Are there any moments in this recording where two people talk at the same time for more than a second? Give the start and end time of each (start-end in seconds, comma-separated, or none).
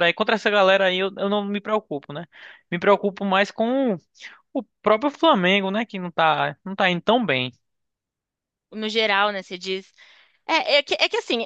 none